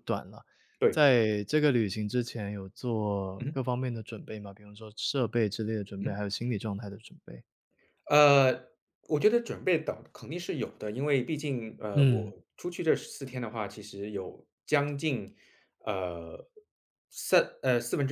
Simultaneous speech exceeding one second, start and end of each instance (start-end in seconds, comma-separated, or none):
none